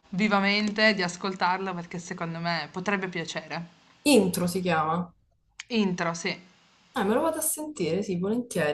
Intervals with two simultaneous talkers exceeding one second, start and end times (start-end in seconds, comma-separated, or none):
none